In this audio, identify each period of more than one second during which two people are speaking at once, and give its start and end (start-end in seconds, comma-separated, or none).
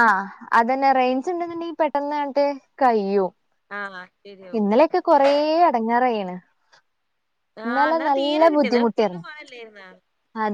7.7-9.2